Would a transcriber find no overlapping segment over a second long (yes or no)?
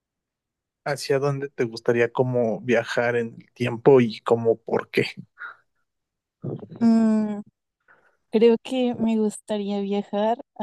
yes